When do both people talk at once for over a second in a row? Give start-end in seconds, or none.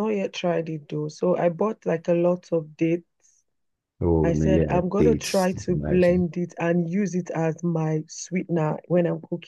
4.2-6.3